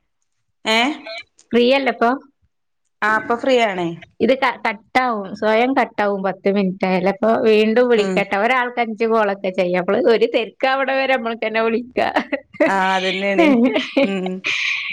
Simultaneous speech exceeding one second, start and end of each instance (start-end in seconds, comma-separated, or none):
none